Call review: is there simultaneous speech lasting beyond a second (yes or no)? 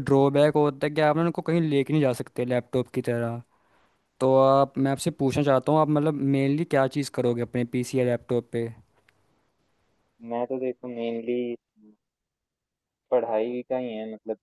no